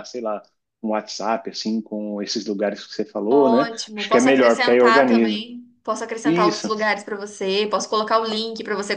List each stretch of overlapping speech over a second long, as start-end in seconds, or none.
3.3-5.5